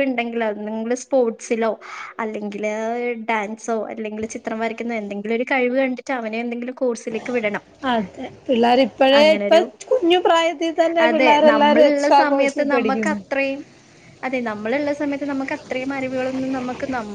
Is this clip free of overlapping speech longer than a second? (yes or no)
no